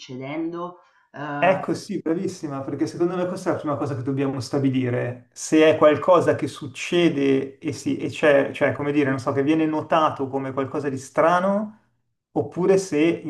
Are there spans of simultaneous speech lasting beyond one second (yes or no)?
no